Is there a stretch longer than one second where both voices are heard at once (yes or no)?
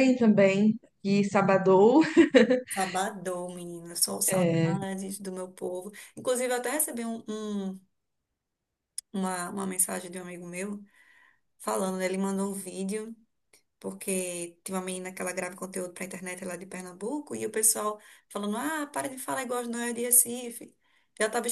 no